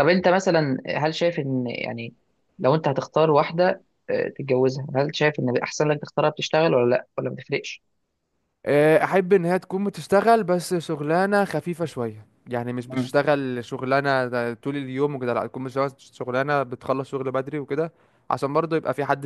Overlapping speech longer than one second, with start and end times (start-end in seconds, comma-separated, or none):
none